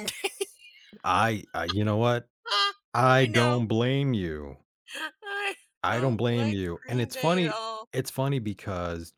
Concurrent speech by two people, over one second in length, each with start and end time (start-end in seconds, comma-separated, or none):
5.8-7.9